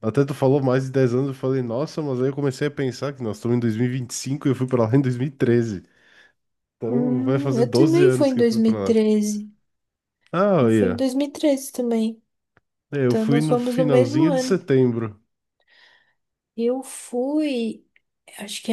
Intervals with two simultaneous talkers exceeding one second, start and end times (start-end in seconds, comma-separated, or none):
6.9-9.0, 13.1-14.6